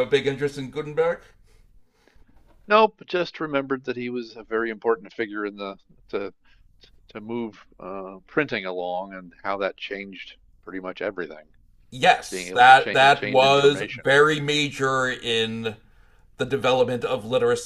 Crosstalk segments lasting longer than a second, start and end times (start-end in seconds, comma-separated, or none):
12.3-14.1